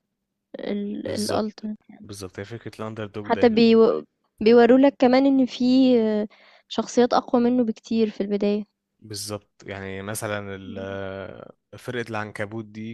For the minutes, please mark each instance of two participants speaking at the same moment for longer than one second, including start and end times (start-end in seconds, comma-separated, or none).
none